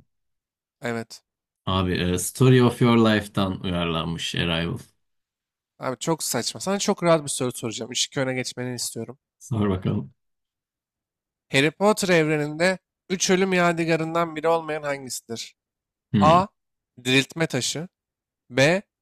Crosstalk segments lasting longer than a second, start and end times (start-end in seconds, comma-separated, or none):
none